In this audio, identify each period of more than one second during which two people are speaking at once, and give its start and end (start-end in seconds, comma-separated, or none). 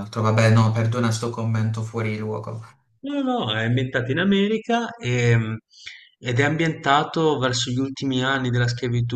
none